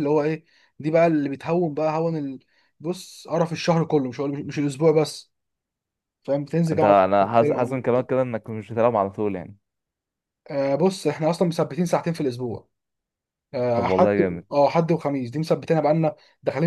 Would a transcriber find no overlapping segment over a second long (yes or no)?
no